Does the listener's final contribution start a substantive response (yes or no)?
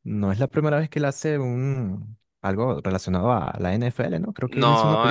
yes